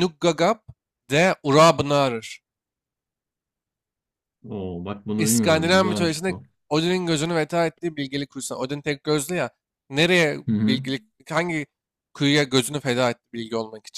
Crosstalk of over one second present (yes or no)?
yes